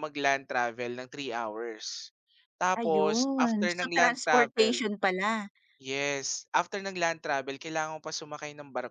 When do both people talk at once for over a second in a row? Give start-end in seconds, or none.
2.8-4.7